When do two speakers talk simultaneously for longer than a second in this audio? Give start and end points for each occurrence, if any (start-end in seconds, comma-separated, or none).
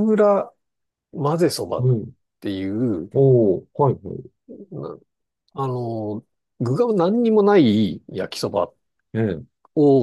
none